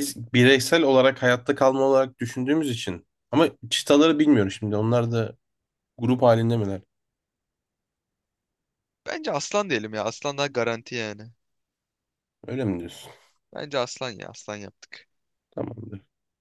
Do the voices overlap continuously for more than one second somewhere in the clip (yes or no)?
no